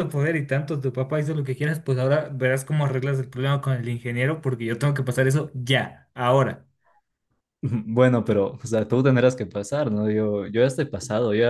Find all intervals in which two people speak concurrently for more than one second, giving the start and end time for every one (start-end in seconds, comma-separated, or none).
none